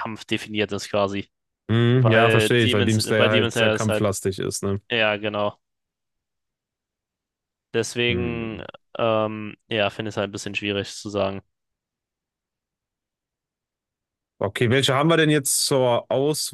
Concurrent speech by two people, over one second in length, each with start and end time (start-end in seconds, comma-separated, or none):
1.9-4.1